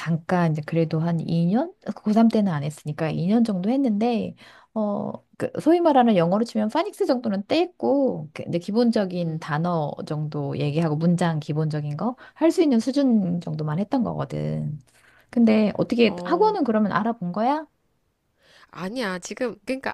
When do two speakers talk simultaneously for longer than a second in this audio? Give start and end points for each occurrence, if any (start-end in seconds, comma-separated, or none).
none